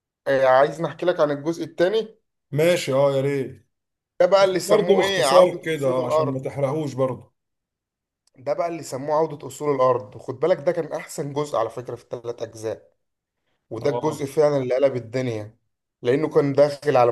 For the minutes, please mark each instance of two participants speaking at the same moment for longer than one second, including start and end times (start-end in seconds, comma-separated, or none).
4.4-6.4